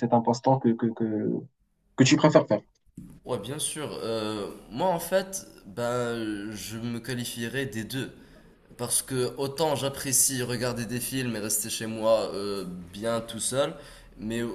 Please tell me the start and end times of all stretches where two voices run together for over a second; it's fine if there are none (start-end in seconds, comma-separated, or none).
none